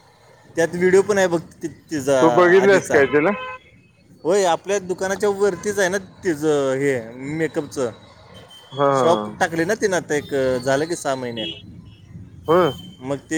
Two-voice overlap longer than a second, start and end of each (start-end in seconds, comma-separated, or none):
none